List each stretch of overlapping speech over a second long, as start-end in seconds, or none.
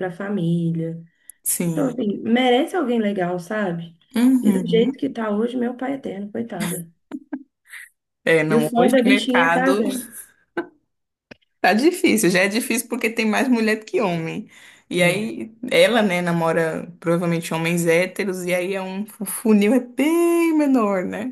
8.5-9.8